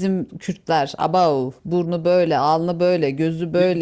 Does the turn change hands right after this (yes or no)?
no